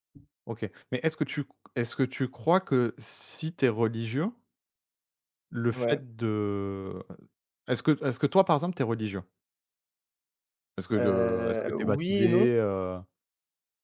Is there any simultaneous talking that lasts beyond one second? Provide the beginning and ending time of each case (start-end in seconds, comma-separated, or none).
11.0-12.5